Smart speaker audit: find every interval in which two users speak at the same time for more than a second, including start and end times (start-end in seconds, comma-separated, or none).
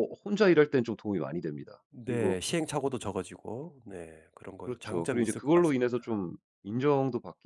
4.6-6.0